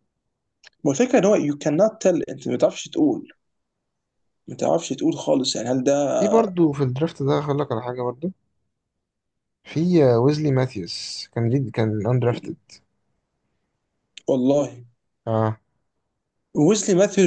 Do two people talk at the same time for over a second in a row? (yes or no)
no